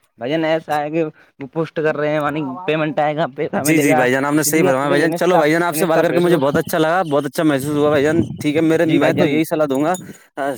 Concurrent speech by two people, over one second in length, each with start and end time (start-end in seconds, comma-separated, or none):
3.6-6.5